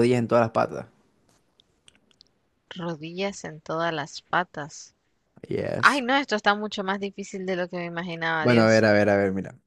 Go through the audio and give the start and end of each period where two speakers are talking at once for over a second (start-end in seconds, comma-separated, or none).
none